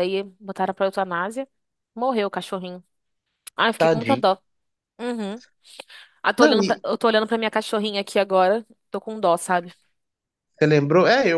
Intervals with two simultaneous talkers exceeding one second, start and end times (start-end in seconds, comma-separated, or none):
none